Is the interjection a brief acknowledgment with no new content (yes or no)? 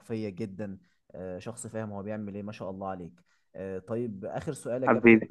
yes